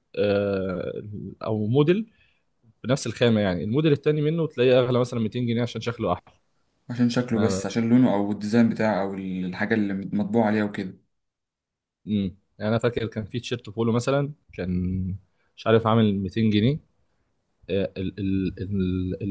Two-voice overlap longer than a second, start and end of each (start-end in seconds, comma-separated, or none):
none